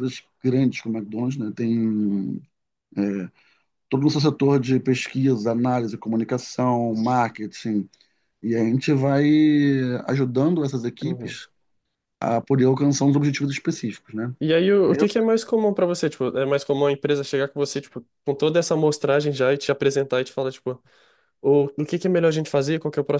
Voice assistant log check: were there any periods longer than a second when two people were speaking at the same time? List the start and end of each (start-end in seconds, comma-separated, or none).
none